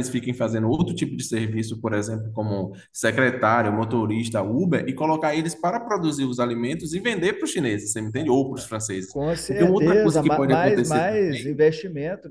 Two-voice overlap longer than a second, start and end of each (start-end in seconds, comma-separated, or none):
9.1-11.6